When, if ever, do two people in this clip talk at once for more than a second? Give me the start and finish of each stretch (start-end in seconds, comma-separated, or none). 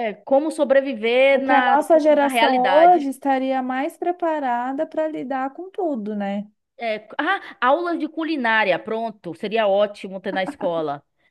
1.3-3.1